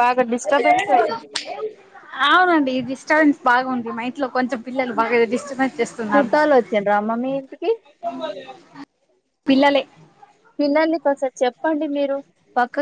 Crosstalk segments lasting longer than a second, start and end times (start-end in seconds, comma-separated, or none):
none